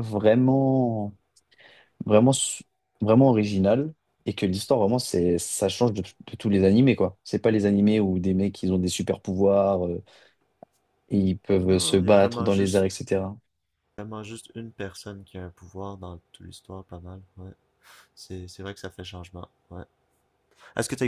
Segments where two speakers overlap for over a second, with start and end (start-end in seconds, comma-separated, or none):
11.6-12.9